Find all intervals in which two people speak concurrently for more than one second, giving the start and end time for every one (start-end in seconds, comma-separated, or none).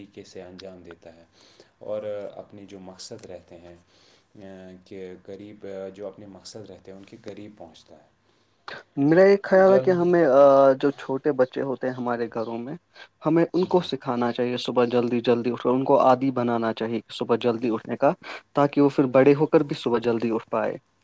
none